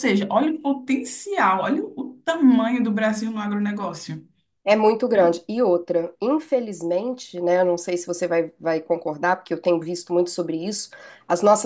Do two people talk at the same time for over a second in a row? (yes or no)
no